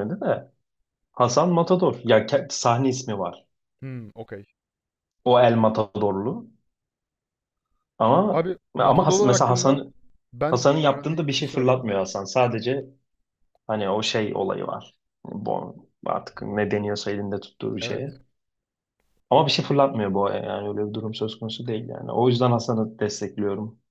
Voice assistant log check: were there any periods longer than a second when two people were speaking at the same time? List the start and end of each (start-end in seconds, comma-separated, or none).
8.3-9.8, 10.5-11.9